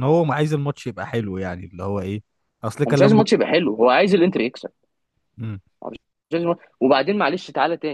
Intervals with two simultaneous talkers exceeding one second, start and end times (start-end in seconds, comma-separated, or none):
none